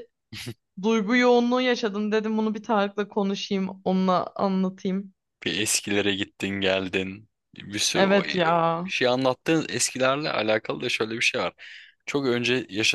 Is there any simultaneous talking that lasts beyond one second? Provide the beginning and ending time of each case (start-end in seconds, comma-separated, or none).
none